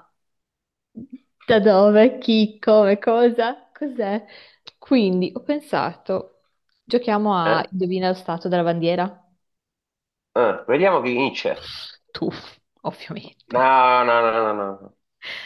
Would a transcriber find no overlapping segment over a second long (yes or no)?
yes